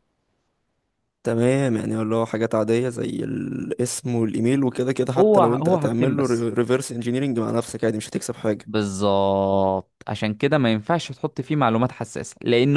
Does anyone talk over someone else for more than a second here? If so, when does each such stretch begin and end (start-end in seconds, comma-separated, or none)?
5.2-6.5